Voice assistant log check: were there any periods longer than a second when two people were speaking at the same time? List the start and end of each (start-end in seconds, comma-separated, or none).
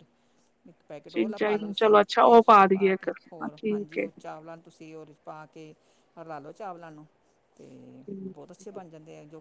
1.1-4.0